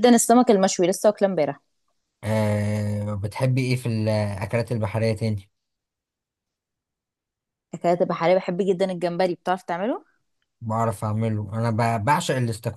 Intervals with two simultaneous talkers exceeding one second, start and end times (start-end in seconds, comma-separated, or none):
none